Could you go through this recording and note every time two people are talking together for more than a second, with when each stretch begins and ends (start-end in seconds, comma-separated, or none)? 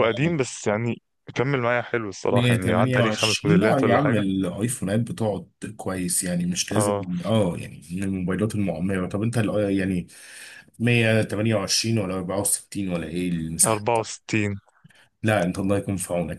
2.3-4.2